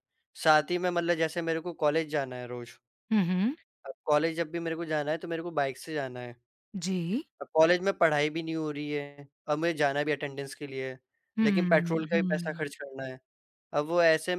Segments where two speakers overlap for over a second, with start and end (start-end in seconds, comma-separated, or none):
11.4-12.7